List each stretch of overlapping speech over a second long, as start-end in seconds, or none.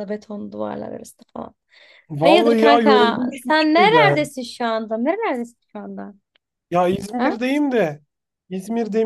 2.2-4.3